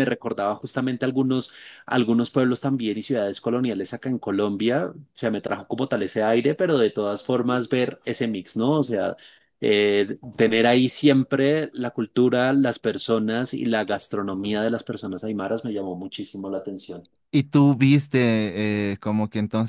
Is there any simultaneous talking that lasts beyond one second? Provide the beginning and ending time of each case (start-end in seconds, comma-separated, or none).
none